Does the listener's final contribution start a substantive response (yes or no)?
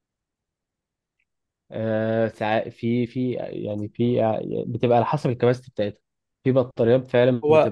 yes